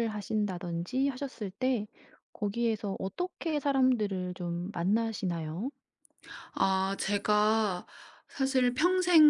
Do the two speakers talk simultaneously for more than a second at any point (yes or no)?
no